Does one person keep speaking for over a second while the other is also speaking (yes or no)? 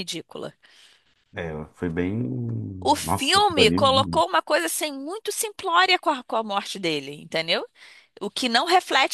yes